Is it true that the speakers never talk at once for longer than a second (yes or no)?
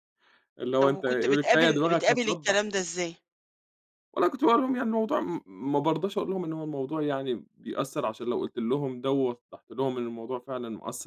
no